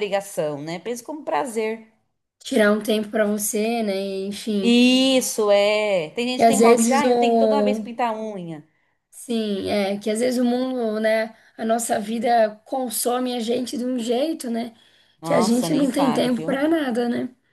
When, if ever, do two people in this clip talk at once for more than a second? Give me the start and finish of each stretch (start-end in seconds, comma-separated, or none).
6.4-7.8, 15.2-16.7